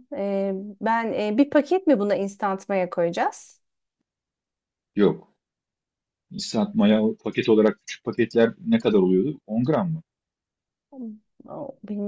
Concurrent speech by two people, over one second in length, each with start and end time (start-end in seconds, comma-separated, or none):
none